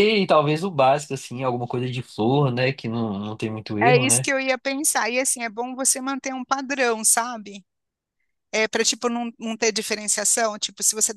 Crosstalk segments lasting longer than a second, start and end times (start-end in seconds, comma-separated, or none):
none